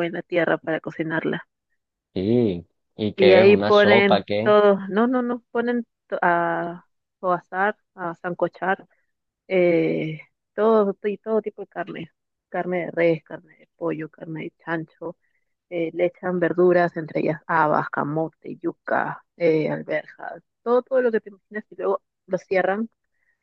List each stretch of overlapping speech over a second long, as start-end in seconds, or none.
3.2-4.5